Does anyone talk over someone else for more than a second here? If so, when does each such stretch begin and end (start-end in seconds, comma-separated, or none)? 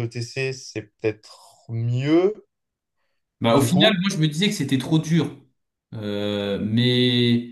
none